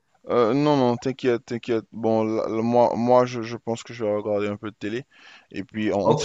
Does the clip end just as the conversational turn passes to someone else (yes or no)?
yes